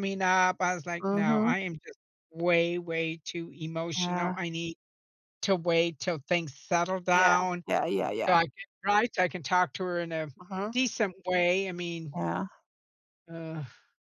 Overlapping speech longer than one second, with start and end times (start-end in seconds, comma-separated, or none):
none